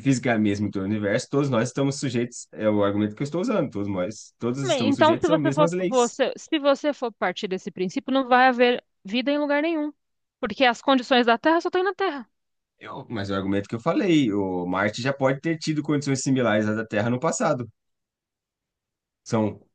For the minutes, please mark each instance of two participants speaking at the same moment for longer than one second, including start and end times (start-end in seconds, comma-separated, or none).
4.6-6.2